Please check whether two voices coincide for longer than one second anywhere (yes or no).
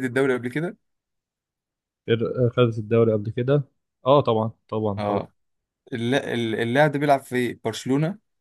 no